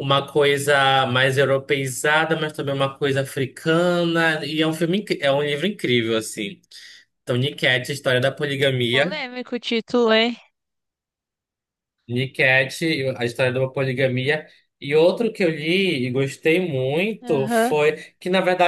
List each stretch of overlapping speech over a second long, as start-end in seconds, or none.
none